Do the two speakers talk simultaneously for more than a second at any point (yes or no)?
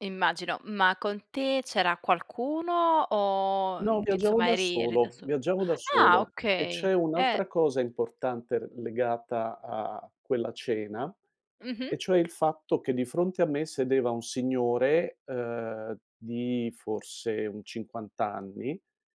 yes